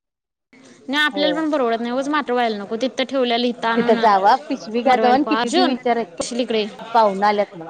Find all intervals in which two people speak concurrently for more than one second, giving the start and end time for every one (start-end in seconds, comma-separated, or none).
4.9-6.2